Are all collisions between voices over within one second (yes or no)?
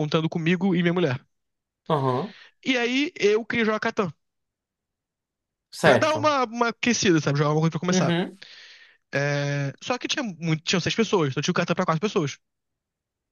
yes